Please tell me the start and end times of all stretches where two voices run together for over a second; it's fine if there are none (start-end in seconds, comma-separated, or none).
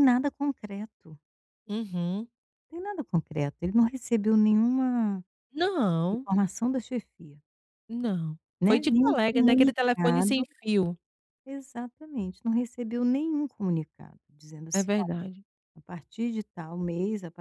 8.6-10.4